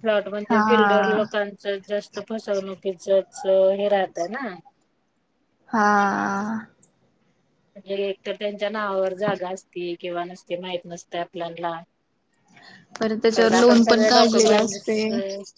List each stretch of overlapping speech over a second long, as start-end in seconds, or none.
13.3-15.1